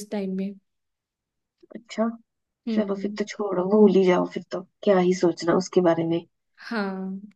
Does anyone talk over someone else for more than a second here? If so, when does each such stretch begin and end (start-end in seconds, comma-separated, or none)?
none